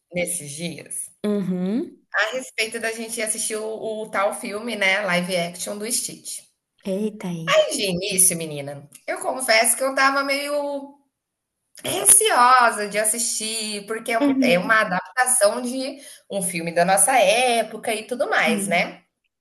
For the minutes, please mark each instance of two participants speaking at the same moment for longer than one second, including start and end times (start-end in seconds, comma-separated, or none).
none